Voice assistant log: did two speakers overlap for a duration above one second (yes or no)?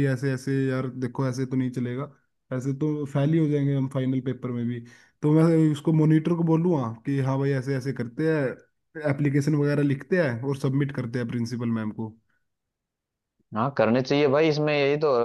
no